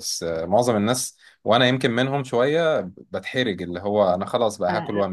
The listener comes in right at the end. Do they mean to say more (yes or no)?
yes